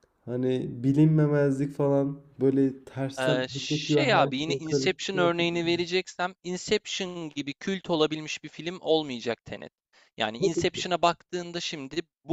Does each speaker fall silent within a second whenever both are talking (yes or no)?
no